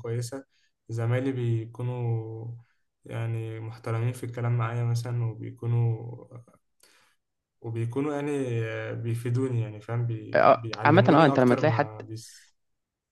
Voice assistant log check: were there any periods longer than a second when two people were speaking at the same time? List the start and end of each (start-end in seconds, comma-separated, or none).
10.3-11.9